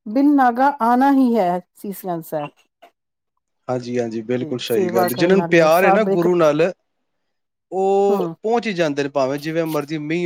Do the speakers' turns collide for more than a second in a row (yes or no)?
yes